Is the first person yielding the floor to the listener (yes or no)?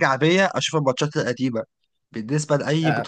no